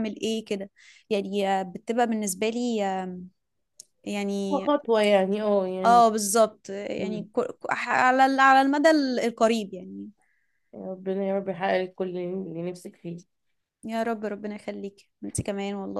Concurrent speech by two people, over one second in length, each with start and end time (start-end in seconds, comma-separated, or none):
none